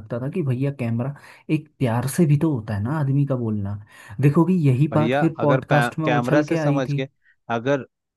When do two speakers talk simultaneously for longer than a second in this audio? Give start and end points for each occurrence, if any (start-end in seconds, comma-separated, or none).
4.9-7.0